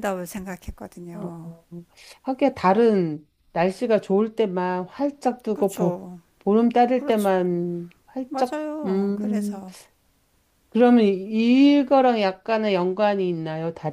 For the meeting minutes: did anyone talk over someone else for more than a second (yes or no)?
yes